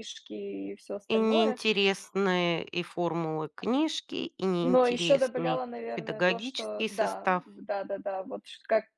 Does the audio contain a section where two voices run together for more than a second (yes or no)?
yes